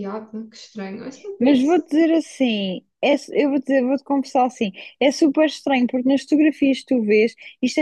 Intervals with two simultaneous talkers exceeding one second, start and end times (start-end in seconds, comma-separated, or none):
none